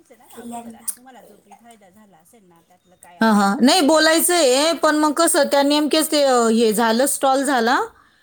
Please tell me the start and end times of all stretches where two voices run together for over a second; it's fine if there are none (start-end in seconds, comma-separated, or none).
3.2-5.0